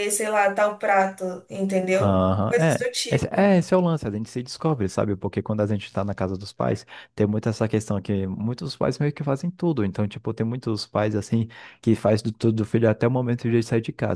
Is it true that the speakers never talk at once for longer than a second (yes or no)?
no